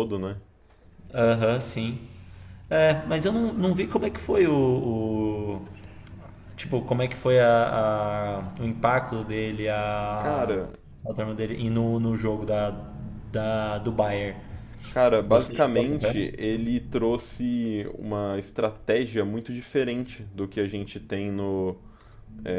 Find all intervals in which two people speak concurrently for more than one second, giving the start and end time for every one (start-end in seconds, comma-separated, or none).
15.3-16.5